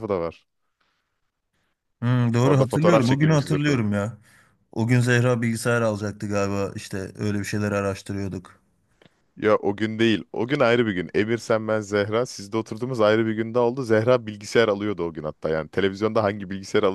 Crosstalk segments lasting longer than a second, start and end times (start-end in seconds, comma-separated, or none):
2.4-3.8